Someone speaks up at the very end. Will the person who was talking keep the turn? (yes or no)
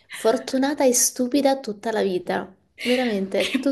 no